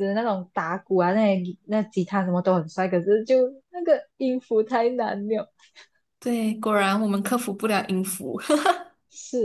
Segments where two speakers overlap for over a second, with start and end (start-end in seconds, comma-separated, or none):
none